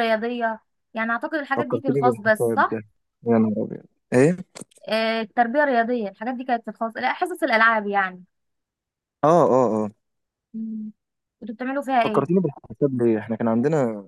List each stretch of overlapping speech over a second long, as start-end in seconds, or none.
1.6-2.8